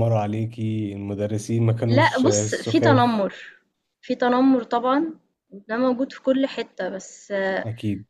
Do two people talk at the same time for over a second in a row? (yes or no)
yes